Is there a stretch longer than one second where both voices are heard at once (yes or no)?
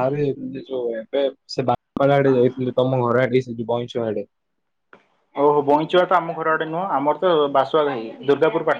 no